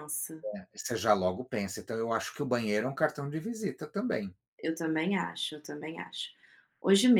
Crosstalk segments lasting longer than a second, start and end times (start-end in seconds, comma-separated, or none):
none